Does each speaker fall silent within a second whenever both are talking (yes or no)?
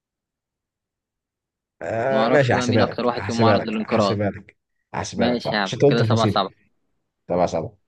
no